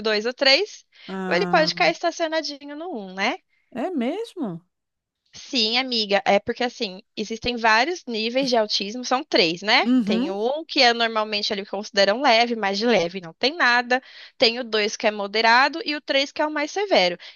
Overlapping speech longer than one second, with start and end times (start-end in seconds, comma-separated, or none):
none